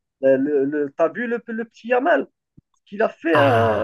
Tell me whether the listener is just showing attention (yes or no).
no